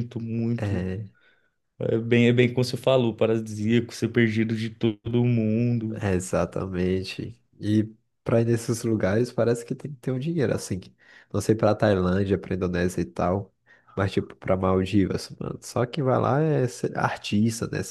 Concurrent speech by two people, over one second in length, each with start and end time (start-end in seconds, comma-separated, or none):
none